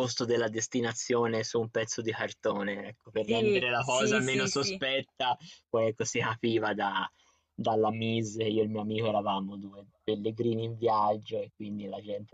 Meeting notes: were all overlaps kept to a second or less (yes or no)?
no